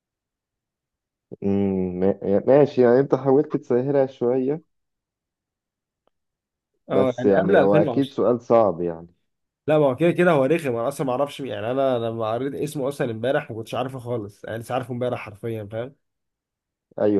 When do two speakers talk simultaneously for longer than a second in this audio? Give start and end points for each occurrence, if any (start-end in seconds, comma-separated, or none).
6.9-8.2